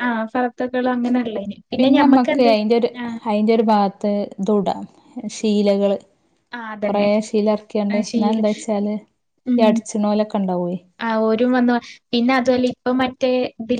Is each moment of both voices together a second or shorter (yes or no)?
yes